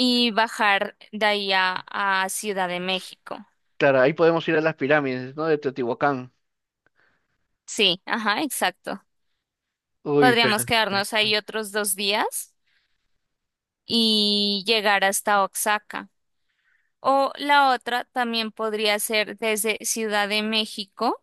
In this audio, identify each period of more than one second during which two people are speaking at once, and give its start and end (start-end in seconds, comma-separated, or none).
10.2-11.4